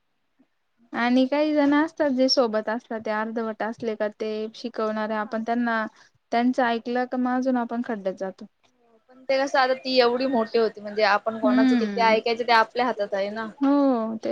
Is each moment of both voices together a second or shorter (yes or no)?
yes